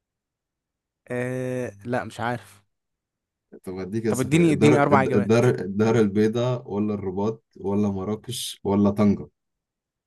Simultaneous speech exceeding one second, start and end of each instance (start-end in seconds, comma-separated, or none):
4.1-5.4